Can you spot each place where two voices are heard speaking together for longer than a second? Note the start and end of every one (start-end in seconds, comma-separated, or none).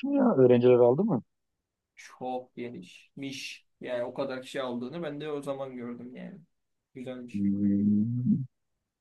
none